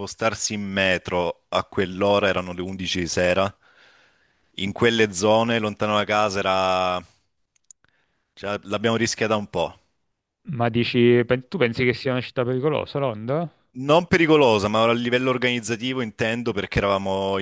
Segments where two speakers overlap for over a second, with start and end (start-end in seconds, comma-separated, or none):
none